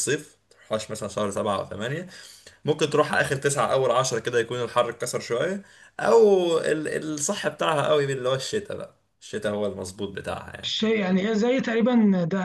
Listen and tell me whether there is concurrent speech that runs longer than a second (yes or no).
no